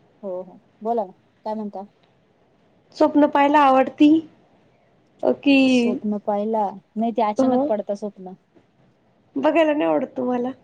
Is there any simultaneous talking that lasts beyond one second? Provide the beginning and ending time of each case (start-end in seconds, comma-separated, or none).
none